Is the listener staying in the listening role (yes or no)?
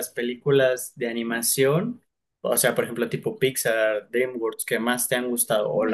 no